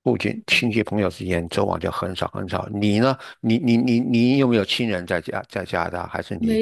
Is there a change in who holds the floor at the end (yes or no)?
yes